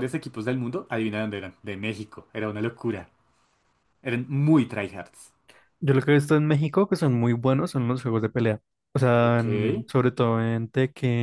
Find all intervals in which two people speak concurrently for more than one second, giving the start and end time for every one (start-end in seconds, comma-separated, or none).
none